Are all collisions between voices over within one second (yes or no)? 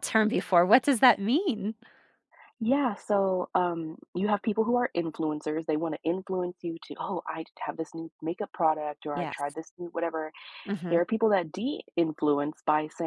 yes